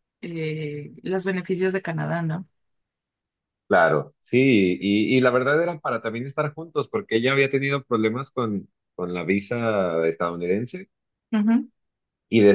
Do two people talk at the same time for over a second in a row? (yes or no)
no